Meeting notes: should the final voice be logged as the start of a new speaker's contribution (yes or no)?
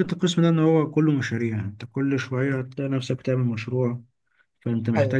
no